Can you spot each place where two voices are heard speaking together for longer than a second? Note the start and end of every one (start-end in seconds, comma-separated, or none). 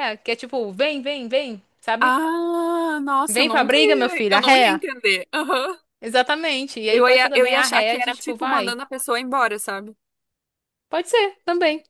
3.3-4.8, 6.9-8.8